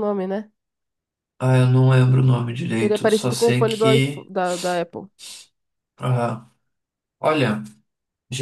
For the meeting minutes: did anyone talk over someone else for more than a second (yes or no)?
yes